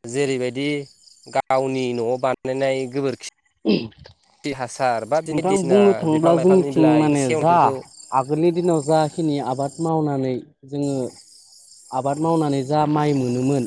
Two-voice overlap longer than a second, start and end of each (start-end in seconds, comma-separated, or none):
5.3-7.5